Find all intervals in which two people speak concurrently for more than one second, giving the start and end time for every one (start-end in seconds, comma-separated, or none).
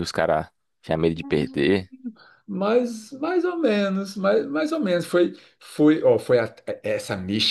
none